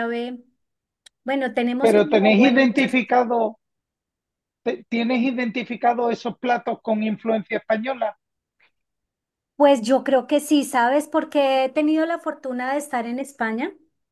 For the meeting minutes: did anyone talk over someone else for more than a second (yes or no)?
yes